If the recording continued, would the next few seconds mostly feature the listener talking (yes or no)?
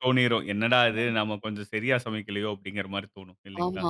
yes